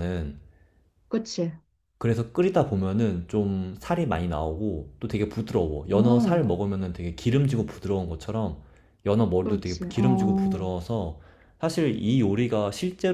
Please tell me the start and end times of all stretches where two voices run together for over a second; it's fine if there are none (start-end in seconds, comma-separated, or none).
9.4-10.7